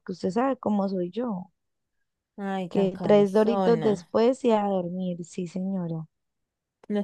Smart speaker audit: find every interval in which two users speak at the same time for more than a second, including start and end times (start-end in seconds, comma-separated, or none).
2.7-3.9